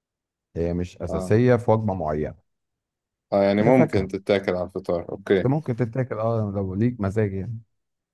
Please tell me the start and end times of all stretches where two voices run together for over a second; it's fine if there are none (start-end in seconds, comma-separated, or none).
none